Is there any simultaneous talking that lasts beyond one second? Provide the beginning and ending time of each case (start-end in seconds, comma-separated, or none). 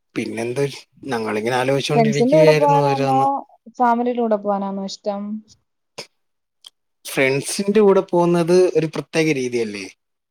1.9-3.2